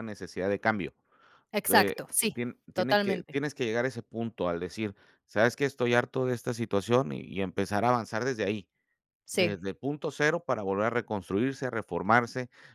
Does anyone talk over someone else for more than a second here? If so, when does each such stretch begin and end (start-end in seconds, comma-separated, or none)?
1.6-3.4